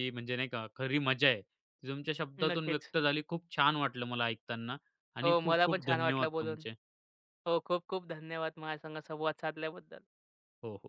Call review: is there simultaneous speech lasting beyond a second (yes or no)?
yes